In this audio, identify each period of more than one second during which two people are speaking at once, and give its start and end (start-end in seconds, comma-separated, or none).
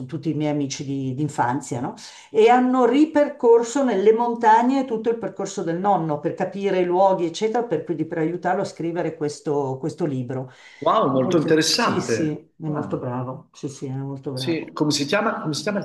11.0-13.0